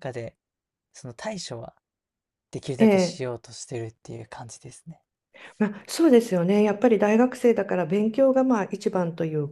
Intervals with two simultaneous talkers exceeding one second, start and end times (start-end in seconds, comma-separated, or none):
none